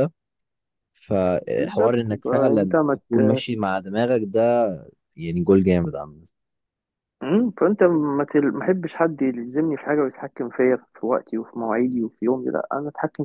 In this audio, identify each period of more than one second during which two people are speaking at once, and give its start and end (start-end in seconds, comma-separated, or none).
1.6-3.4